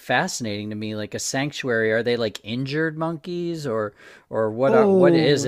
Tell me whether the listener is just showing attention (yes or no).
no